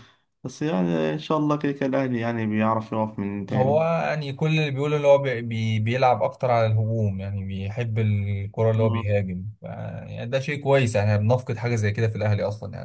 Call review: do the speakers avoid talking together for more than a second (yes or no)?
yes